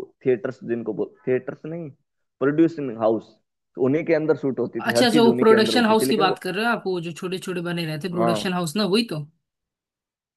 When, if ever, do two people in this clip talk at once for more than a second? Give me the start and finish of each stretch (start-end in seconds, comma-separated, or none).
4.9-6.4